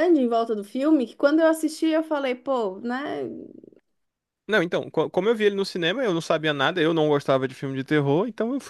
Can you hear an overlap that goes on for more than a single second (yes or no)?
no